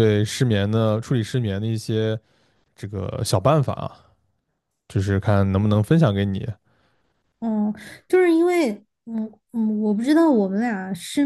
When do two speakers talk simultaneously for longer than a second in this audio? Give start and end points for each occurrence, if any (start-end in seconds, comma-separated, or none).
none